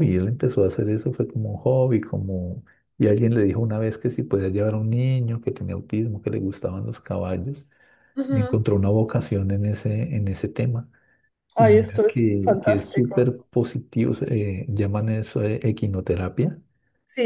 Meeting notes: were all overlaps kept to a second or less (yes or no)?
no